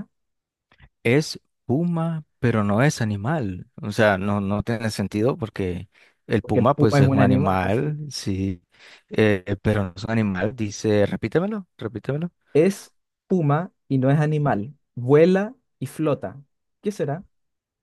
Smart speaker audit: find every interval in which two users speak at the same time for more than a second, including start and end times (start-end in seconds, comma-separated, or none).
6.4-7.9